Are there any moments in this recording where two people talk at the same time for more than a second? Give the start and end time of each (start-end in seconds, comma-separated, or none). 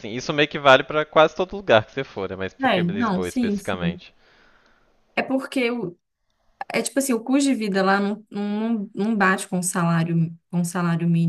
2.6-4.0